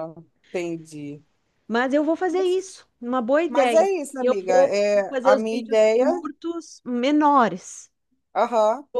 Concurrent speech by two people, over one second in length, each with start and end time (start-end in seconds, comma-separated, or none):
3.5-6.1